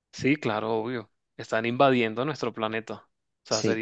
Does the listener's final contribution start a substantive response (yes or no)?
no